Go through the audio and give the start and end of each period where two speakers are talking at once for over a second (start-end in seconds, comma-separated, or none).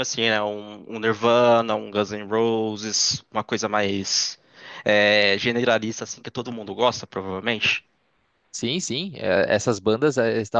none